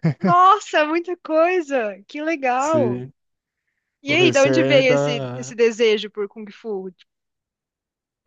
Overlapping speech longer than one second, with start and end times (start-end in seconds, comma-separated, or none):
4.1-5.5